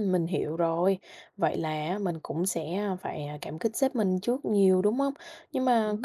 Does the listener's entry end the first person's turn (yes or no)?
no